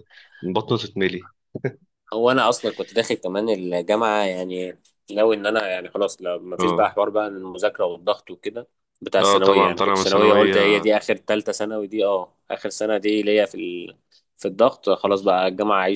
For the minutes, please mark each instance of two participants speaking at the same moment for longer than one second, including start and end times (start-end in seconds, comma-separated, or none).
9.2-10.6